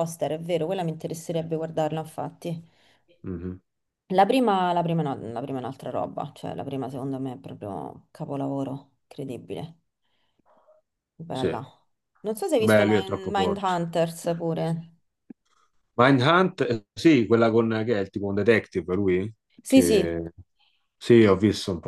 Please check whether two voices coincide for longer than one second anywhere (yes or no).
yes